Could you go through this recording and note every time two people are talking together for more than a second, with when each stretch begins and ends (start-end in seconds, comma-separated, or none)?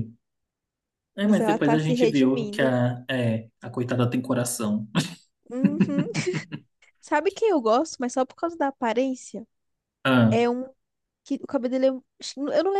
1.2-2.7